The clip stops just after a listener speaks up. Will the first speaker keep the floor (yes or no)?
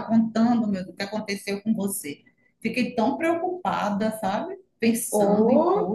no